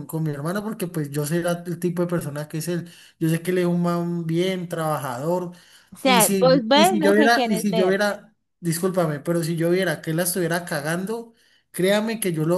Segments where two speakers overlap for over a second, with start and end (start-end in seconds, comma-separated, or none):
6.0-8.0